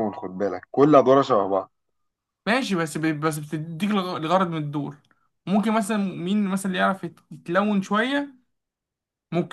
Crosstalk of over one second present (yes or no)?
no